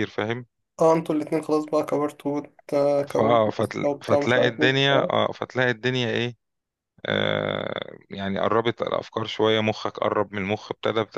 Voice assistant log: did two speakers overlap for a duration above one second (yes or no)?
yes